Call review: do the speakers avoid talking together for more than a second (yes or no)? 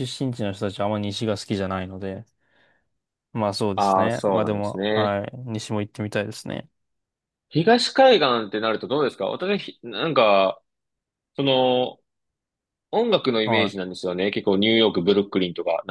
no